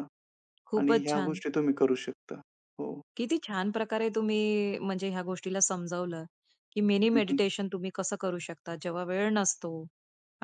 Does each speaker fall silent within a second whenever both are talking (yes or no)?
yes